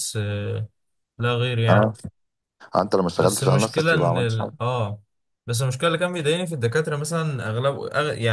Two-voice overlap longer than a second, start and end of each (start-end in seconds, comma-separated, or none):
3.2-4.5